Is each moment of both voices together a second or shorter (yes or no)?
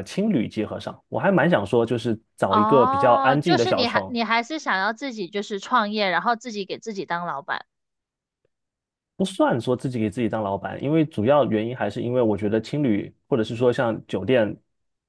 no